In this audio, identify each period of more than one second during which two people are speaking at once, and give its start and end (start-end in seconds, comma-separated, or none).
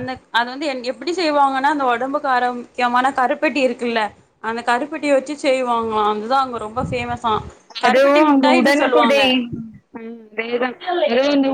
7.8-9.2